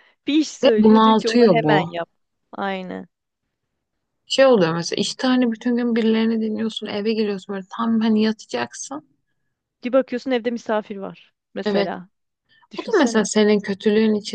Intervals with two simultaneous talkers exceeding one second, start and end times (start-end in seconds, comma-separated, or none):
0.6-1.9